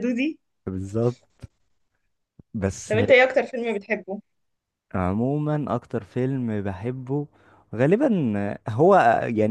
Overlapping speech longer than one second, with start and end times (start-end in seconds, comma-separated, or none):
none